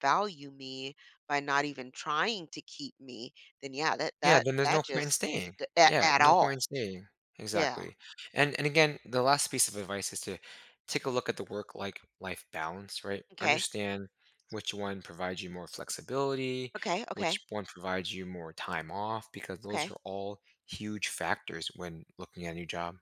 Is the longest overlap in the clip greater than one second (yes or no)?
yes